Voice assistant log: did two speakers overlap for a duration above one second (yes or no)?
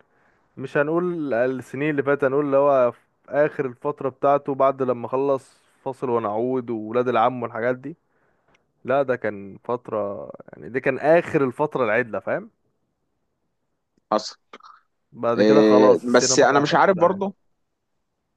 yes